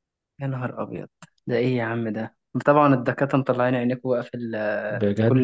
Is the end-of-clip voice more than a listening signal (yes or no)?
yes